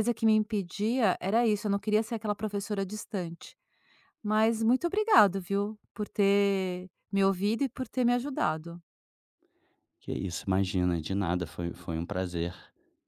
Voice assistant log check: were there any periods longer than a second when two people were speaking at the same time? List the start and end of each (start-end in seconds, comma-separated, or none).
none